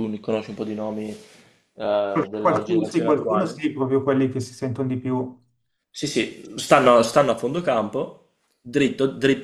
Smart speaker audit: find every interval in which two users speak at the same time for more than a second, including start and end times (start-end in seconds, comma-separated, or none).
2.1-3.7